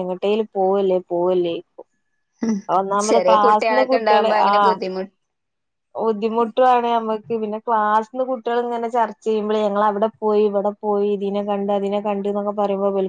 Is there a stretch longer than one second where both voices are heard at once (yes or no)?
yes